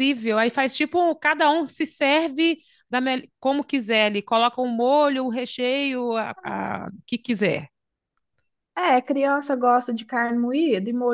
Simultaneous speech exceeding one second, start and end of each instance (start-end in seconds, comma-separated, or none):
none